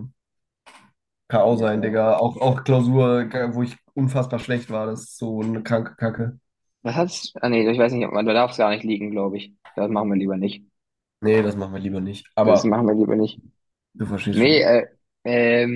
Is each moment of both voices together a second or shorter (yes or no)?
yes